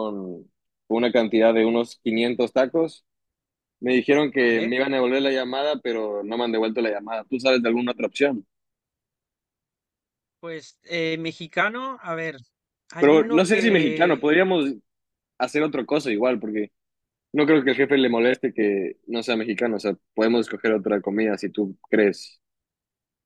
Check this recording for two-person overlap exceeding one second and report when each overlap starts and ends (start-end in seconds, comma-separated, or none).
13.0-14.2